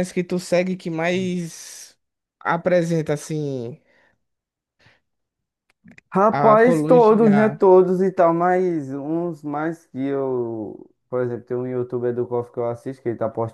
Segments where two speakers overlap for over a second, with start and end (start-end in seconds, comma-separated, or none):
6.3-7.6